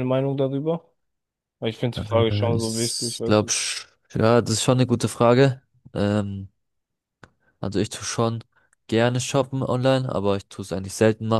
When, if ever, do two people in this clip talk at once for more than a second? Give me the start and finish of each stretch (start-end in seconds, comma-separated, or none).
1.9-3.5